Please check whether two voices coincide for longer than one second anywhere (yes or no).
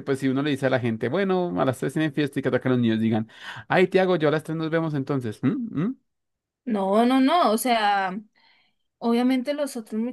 no